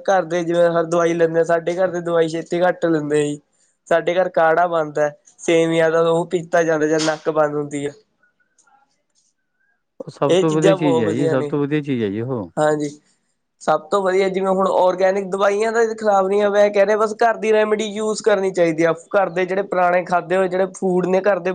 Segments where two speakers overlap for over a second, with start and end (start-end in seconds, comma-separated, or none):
10.3-11.5